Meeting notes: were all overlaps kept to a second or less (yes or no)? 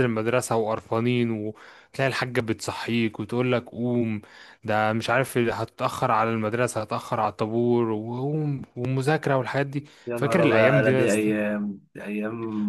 no